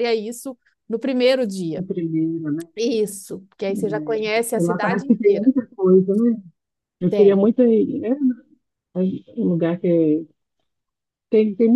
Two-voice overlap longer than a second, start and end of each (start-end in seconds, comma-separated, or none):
3.7-5.5